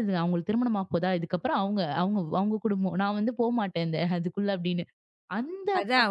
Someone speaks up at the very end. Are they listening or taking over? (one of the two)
taking over